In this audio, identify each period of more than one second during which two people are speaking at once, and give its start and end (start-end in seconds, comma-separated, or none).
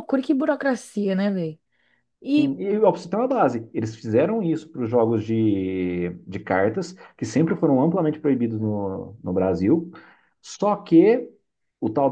none